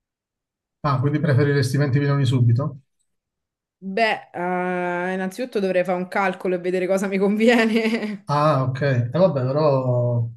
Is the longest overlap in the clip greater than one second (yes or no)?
no